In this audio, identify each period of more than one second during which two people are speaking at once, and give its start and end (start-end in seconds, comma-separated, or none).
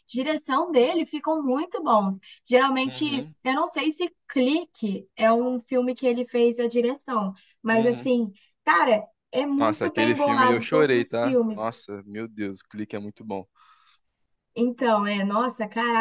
9.6-11.8